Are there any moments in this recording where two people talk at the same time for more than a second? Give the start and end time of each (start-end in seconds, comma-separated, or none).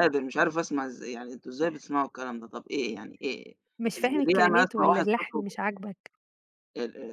4.0-5.5